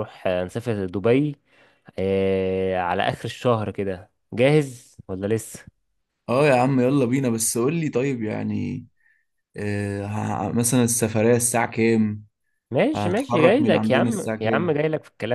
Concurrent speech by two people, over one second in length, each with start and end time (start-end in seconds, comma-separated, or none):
12.9-14.8